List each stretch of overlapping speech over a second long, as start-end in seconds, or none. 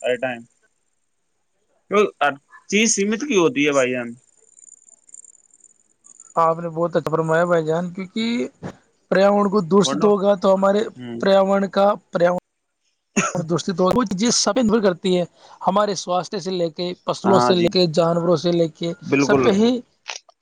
none